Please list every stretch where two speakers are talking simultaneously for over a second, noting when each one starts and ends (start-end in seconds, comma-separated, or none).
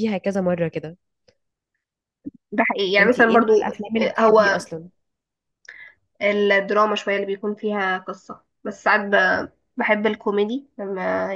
3.0-4.6